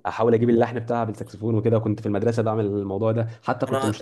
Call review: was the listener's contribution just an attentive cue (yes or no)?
yes